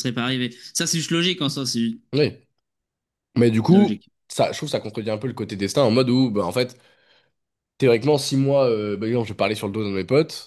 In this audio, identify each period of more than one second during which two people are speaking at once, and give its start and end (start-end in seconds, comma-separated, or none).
none